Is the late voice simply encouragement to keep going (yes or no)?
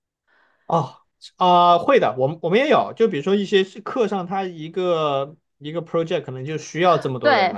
no